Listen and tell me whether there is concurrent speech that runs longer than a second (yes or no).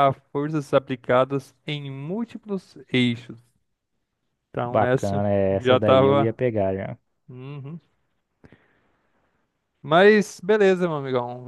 yes